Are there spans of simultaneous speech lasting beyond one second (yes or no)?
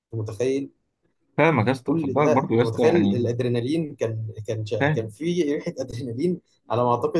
yes